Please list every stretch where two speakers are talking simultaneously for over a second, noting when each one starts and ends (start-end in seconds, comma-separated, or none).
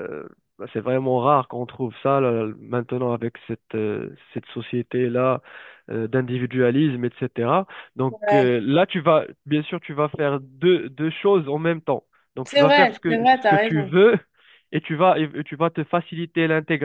12.4-13.9